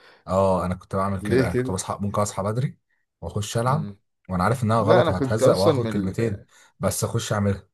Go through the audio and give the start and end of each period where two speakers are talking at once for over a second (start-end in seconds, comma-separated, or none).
4.8-6.4